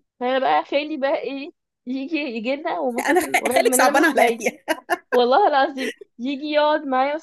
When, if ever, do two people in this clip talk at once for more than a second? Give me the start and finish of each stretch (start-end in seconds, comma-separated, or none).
3.0-4.4